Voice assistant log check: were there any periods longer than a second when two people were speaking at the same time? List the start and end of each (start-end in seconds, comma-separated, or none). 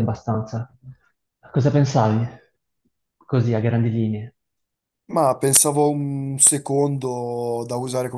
none